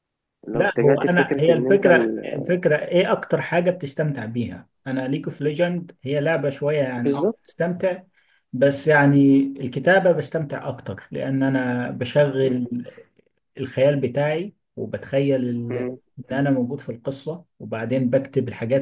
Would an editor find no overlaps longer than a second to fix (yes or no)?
no